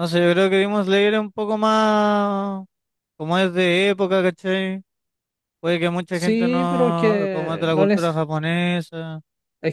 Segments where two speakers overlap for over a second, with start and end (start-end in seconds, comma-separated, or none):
6.1-8.2